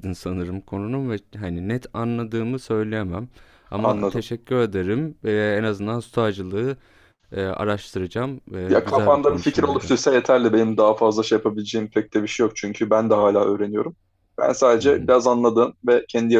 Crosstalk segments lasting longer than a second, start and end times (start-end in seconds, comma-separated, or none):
8.7-9.9